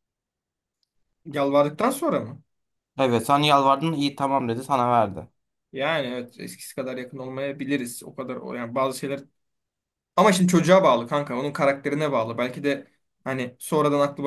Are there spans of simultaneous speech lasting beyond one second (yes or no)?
no